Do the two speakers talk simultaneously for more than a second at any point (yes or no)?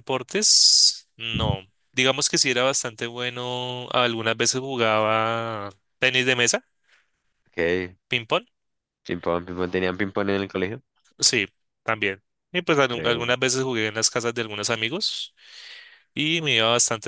no